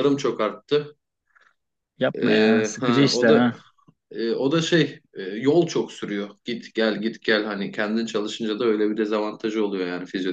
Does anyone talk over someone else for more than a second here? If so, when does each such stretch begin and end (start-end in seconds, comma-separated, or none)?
2.2-3.5